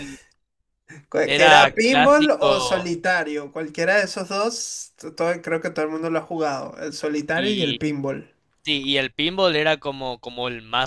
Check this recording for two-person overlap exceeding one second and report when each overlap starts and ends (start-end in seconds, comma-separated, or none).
1.2-2.9